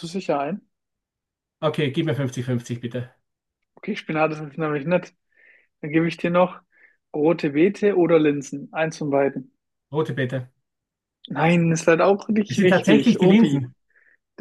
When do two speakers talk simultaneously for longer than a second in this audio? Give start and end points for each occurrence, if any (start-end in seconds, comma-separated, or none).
12.5-13.7